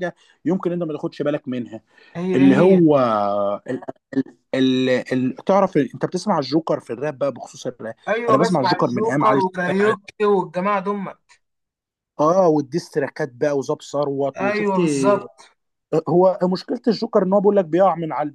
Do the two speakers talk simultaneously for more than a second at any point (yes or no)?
yes